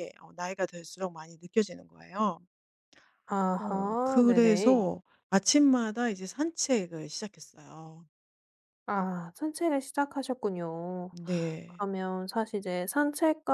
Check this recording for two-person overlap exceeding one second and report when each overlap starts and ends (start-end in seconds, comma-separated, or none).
3.6-4.8